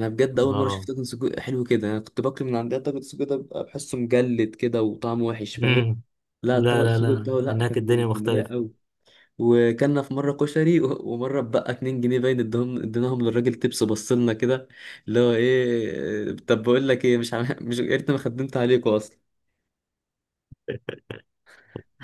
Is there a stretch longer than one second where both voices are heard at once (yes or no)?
yes